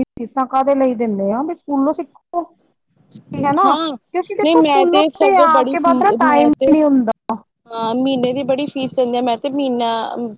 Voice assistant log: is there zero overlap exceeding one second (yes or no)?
no